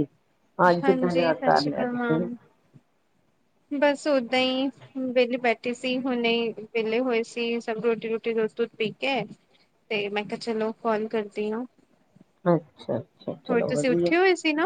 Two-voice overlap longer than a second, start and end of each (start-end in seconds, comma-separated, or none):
0.8-2.2